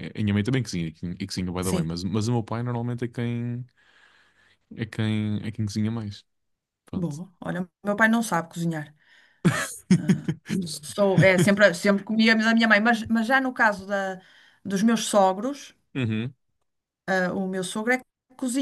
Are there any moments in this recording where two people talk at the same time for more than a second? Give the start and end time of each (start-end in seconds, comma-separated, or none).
none